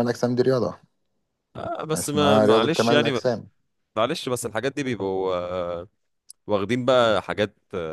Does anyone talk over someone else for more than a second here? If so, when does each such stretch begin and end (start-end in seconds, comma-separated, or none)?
1.9-3.2